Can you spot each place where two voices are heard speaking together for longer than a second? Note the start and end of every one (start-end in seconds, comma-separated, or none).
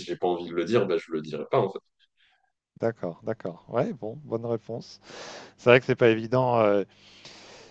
none